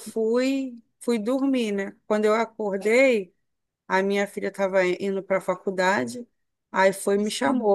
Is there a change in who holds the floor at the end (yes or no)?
no